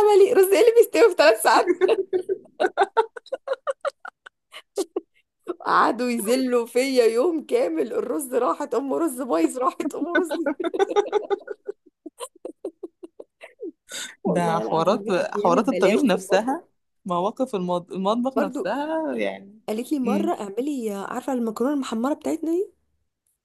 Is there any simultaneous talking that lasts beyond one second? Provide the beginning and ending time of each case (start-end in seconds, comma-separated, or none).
14.3-16.6